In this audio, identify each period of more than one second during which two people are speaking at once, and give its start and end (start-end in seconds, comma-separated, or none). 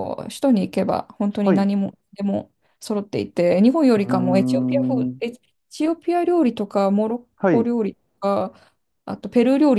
4.0-5.2